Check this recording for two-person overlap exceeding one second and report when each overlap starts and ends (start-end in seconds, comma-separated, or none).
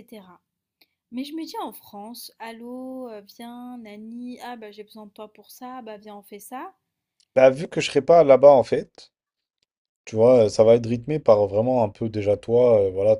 none